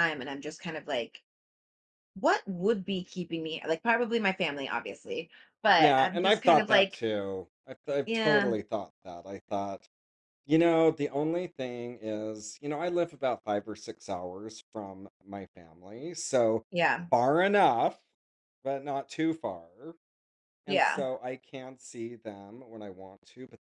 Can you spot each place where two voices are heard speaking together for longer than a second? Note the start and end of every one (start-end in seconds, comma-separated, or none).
5.7-7.0